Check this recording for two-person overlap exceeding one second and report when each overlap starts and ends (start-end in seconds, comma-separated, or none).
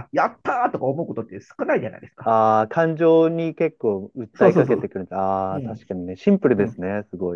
none